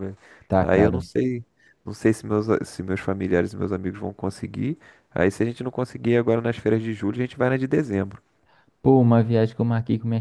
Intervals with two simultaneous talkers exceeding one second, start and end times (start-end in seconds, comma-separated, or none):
none